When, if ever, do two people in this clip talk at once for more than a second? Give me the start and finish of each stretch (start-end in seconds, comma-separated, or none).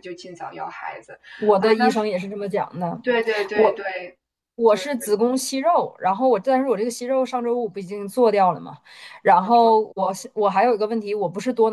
none